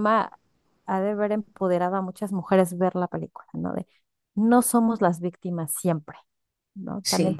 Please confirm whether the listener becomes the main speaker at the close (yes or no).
no